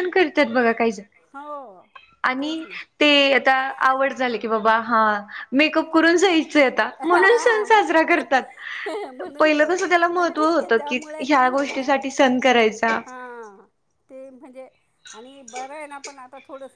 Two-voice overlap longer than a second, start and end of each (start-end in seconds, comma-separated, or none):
9.2-11.9